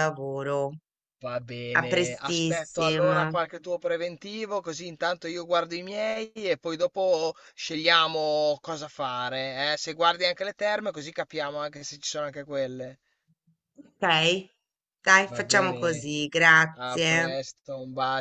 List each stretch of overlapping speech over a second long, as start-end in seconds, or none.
1.7-3.2